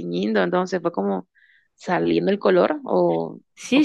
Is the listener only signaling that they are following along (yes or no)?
no